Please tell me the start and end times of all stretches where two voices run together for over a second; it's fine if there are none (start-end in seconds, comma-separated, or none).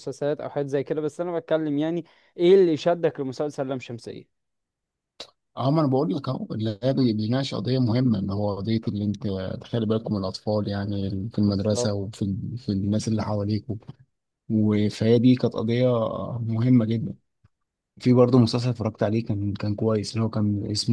none